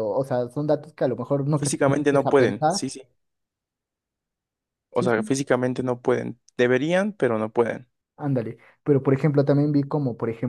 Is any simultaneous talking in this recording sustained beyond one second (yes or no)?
yes